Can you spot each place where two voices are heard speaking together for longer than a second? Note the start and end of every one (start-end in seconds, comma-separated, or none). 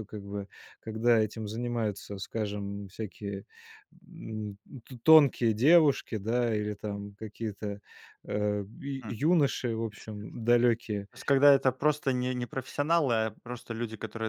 none